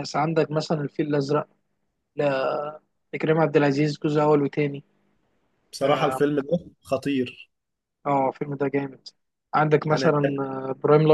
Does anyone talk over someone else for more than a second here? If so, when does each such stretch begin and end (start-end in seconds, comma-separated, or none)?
none